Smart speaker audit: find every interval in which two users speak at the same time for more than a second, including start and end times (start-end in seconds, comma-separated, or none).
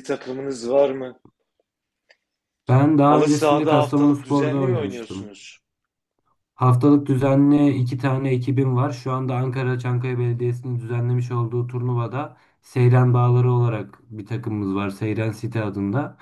3.0-5.3